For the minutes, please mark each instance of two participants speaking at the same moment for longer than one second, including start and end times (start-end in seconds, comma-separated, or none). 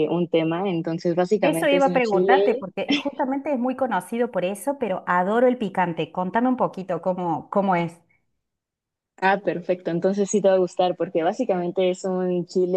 1.4-2.7